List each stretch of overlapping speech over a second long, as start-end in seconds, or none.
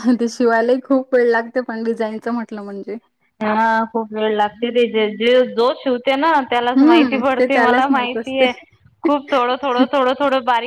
6.8-8.5